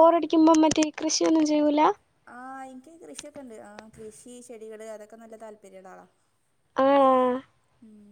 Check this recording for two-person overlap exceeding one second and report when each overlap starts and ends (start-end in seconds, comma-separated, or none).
none